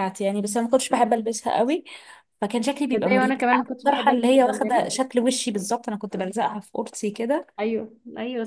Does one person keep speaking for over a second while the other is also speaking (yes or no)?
yes